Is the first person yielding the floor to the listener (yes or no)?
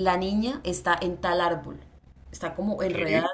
no